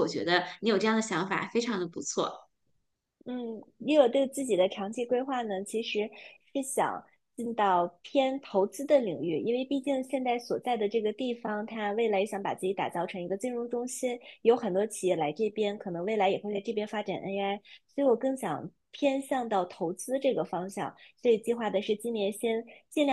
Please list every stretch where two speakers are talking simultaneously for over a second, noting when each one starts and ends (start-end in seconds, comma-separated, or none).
none